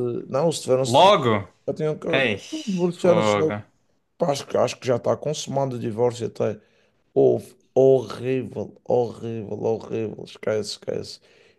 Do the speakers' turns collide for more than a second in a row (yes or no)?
no